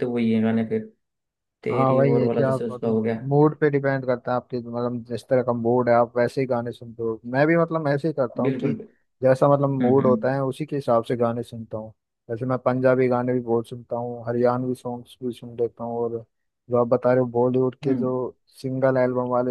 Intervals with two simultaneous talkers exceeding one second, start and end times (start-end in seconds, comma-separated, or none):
1.7-3.2